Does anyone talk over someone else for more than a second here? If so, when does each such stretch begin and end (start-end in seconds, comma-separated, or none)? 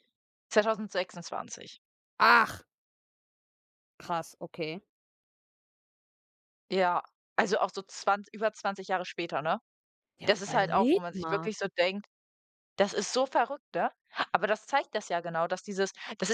10.2-11.5